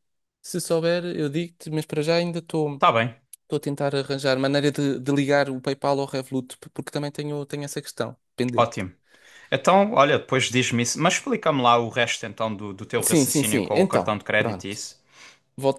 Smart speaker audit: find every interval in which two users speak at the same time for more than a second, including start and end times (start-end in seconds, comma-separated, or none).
13.0-14.8